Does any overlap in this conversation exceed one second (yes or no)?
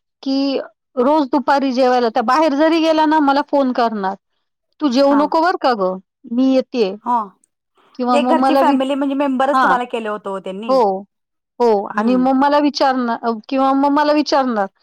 no